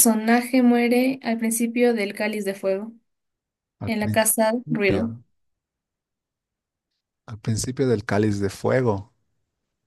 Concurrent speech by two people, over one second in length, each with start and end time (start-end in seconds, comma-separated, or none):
3.9-5.1